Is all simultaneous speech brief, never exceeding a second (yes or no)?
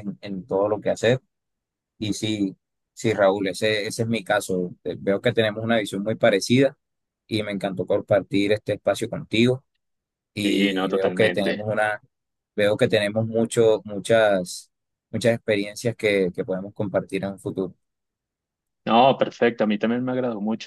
no